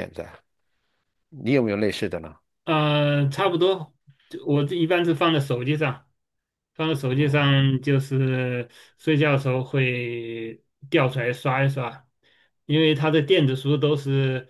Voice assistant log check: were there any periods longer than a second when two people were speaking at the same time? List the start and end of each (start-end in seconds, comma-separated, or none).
none